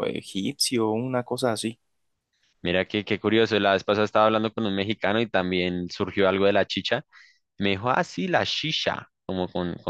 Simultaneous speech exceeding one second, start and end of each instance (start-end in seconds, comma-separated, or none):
none